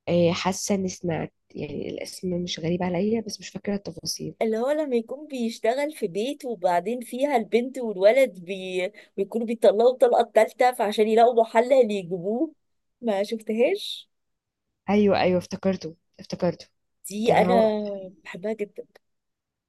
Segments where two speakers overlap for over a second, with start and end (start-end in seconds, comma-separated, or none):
none